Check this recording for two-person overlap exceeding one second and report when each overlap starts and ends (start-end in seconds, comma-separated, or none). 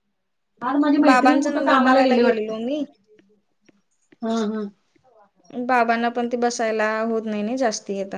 1.1-2.5